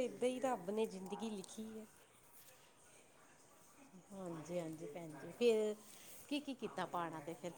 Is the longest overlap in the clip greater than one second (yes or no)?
no